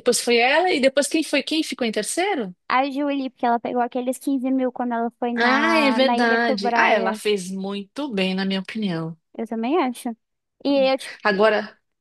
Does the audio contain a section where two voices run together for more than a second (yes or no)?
yes